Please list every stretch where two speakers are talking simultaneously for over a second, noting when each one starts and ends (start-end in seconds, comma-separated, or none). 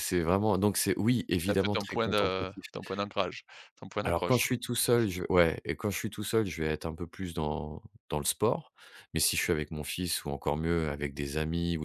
1.4-2.6